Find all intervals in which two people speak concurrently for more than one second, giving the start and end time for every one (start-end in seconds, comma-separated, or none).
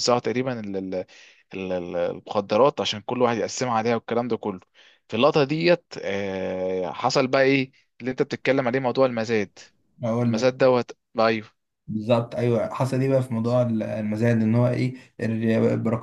none